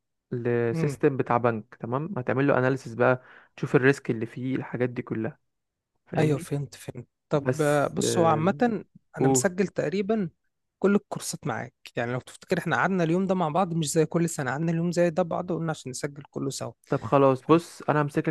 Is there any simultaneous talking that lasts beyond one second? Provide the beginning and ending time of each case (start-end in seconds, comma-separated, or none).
7.3-8.5